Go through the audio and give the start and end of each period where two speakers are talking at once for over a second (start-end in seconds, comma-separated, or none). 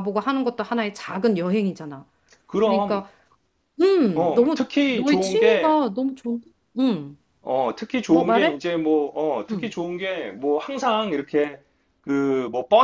4.2-5.8